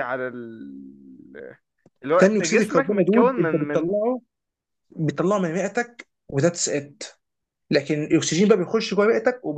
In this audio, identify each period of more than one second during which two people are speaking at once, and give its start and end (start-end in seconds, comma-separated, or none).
2.2-3.9